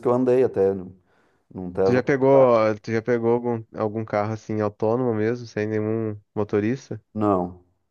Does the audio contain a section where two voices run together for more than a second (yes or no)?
no